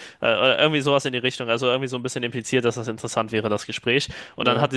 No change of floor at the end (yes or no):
yes